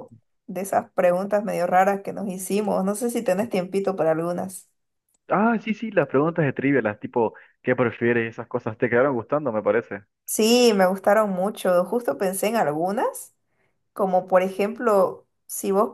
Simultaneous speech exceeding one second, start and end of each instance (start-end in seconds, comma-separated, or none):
none